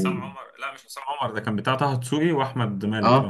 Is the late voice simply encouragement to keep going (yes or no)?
no